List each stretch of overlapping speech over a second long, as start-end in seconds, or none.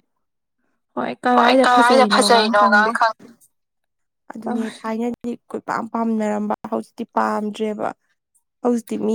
1.4-2.9